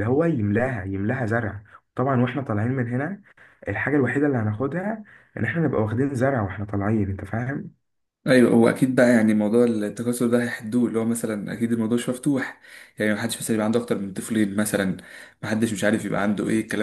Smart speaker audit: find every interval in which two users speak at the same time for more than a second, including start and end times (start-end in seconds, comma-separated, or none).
none